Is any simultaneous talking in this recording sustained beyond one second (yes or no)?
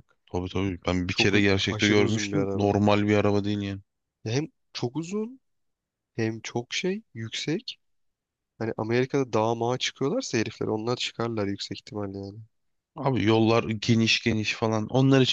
yes